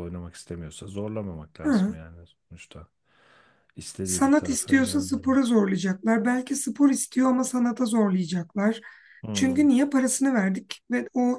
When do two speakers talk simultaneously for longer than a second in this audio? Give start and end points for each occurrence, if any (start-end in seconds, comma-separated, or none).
4.0-5.5